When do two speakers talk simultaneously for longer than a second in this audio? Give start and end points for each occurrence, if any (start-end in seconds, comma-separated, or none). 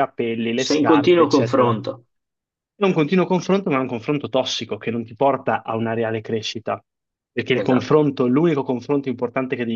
0.6-1.8